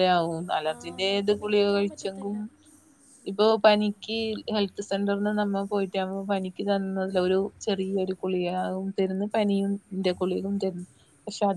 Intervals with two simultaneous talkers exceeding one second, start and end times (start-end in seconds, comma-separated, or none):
0.7-2.4